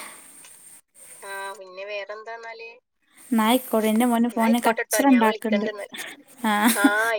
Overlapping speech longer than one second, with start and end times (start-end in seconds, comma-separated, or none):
4.3-5.7